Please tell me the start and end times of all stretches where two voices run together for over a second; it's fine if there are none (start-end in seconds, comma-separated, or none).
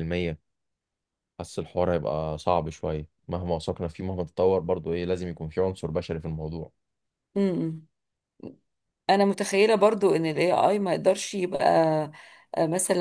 none